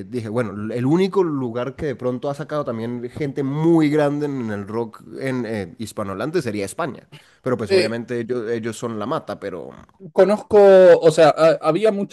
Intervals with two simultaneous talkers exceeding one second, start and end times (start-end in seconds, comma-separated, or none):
none